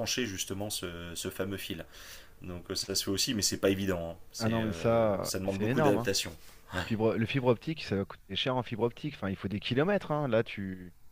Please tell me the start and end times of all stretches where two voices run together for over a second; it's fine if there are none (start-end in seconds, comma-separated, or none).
4.4-6.1